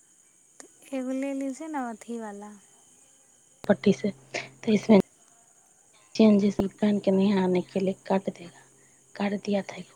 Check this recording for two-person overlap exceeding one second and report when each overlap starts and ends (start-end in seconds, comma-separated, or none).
none